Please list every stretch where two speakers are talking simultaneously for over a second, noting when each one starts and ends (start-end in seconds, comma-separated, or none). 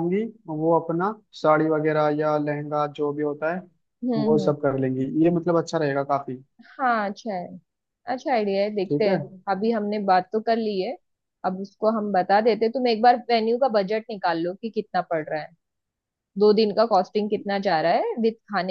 none